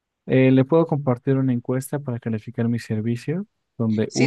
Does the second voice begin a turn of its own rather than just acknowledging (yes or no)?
yes